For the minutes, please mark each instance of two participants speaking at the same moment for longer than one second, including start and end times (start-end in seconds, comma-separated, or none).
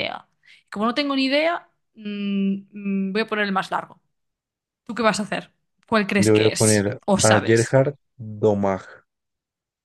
6.2-7.8